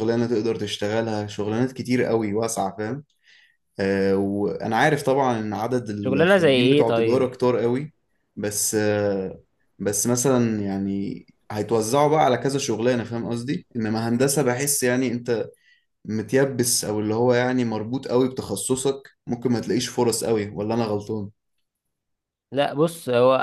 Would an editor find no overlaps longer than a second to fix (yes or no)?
no